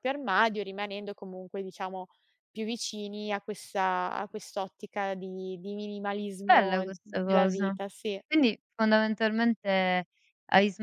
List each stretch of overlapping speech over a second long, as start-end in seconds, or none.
6.5-7.8